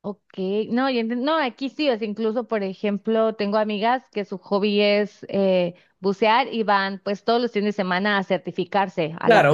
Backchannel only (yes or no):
no